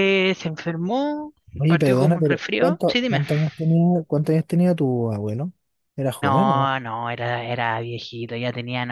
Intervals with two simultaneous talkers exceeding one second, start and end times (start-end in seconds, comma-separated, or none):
1.7-3.2